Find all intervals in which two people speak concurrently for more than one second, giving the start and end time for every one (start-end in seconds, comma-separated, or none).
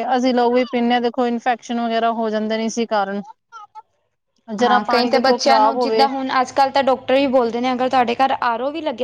4.7-6.1